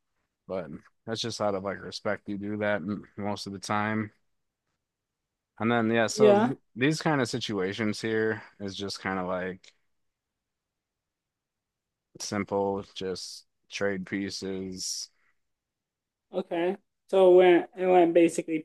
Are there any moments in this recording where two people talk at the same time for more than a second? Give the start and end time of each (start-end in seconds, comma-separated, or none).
none